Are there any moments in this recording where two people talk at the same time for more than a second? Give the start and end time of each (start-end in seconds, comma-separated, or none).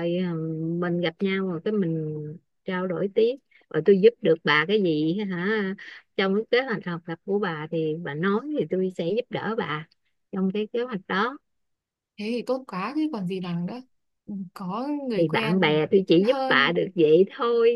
15.2-16.8